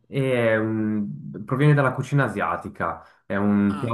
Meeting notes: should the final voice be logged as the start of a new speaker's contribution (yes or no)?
no